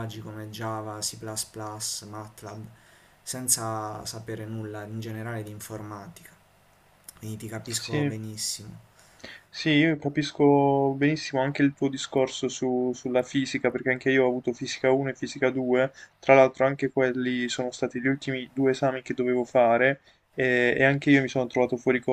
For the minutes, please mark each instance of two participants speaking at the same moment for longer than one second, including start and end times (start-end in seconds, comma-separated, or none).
none